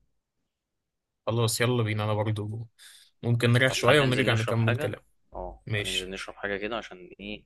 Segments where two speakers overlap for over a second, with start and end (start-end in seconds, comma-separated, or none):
3.7-4.9